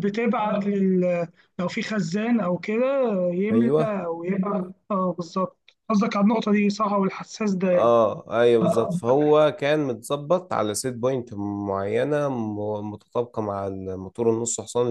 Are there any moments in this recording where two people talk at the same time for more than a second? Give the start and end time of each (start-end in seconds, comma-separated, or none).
none